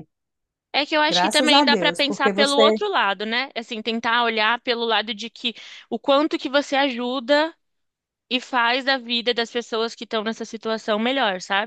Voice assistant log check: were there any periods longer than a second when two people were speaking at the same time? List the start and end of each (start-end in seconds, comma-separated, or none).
1.1-2.6